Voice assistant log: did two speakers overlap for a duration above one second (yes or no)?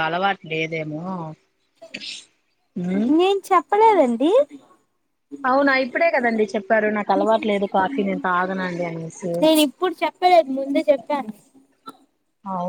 no